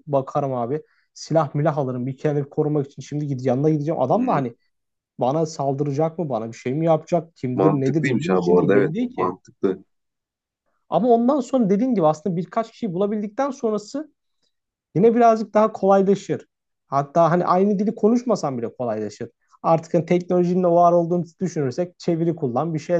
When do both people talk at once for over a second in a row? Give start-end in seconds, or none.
7.5-9.3